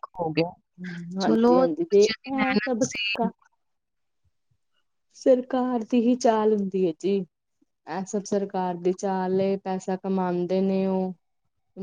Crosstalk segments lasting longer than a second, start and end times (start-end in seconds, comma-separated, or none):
1.2-2.8